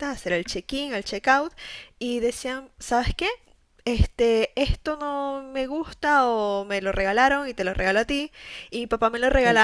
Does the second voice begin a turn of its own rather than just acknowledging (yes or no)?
no